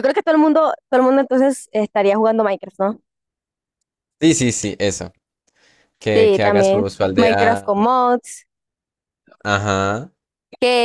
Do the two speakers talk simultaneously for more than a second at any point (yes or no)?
yes